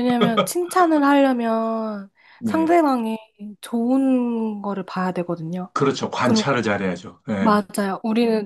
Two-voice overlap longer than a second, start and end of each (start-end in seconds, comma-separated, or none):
none